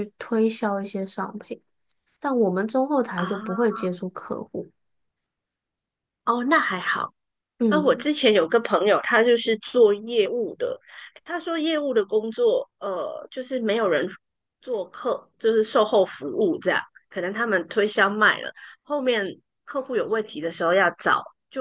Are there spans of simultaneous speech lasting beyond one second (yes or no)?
no